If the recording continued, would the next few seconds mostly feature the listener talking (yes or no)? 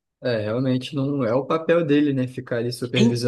yes